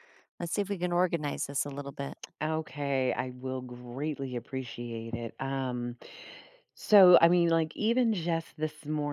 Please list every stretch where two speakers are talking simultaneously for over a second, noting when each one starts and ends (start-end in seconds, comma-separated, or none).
none